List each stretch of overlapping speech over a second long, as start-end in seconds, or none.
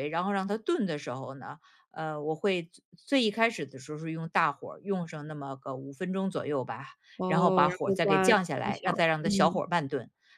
7.3-9.6